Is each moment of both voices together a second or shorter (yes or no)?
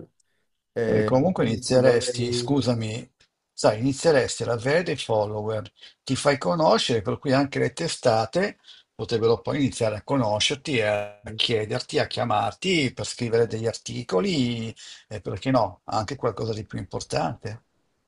no